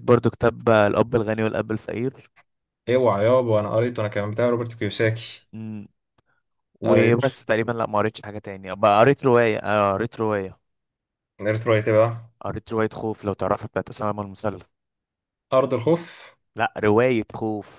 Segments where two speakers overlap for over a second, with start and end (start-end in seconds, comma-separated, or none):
none